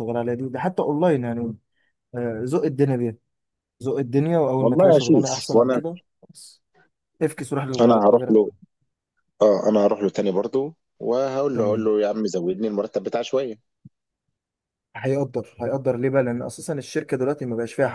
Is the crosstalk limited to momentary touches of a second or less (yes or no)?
no